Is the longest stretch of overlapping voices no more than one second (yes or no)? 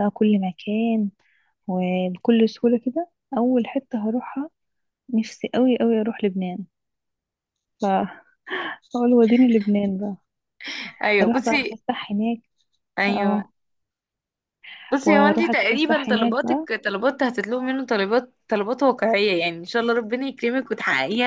no